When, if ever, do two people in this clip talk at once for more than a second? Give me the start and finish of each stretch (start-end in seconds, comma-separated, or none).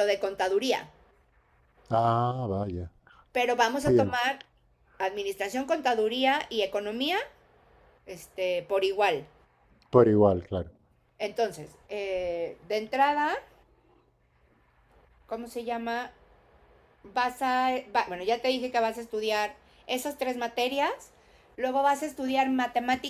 none